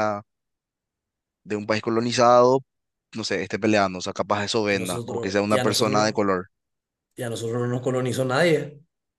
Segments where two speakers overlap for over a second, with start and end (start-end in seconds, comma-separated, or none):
4.7-6.1